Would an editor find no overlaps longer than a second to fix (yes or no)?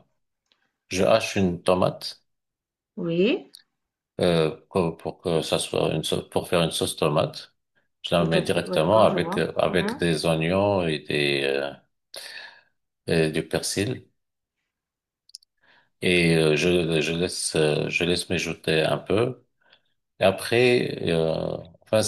no